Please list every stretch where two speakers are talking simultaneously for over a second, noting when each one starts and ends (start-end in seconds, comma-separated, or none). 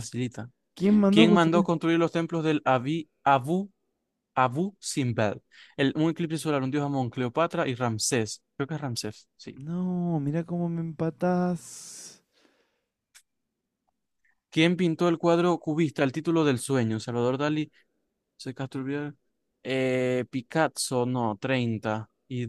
none